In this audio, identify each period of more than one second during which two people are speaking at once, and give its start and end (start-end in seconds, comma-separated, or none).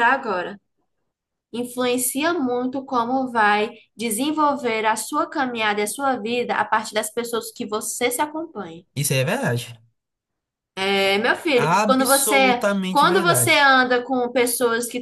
11.6-13.8